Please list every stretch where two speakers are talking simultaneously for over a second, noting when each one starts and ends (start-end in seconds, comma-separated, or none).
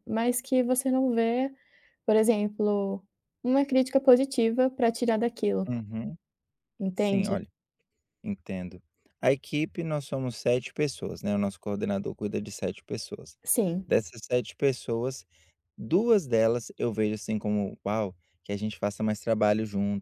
none